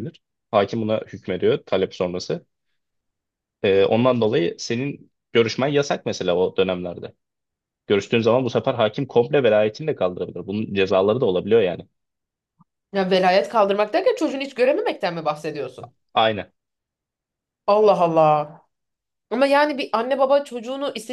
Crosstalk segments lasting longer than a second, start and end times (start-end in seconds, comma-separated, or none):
none